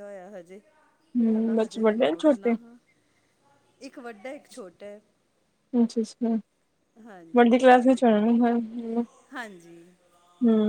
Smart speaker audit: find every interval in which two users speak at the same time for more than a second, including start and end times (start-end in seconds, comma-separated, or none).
1.3-2.5